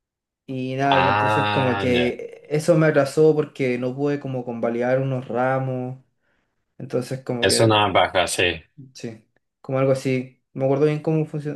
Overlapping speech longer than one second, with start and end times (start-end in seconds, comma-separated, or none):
0.9-2.2